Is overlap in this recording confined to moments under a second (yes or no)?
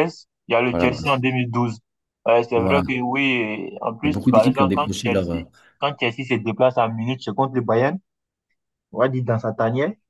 no